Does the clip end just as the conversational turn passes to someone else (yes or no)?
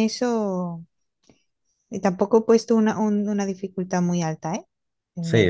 yes